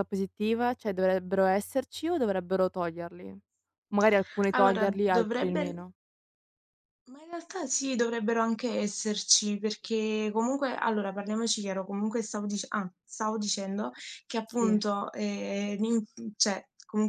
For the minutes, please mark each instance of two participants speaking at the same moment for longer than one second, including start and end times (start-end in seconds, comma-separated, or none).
4.5-5.8